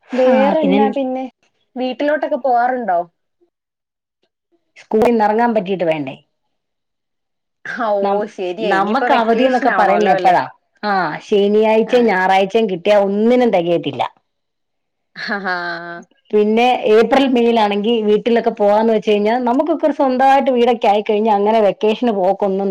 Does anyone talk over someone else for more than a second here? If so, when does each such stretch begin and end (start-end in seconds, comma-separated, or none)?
8.7-10.3